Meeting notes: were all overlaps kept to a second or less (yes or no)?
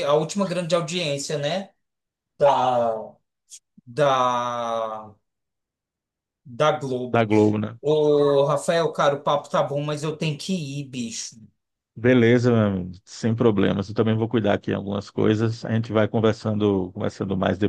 yes